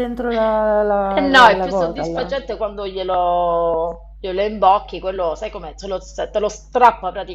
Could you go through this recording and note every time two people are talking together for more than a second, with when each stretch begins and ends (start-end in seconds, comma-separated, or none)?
1.1-2.3